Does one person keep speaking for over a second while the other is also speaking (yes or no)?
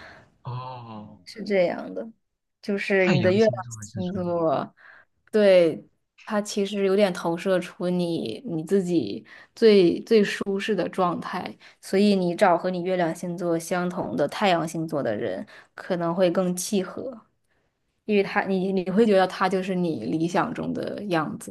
yes